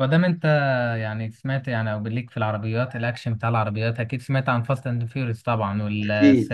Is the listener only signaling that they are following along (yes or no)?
no